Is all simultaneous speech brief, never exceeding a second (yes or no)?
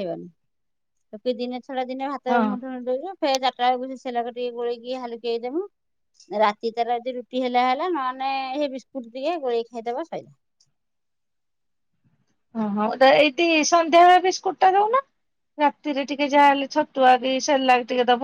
yes